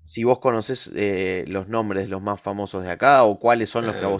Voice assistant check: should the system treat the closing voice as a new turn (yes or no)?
yes